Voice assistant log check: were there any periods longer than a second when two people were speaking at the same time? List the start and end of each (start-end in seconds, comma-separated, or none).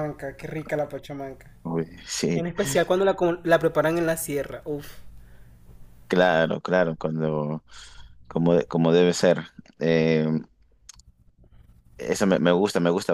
none